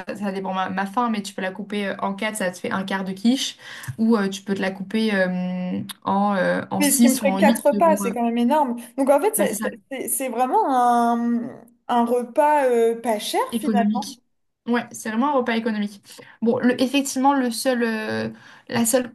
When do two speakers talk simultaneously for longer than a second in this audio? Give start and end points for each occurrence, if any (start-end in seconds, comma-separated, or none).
6.8-8.1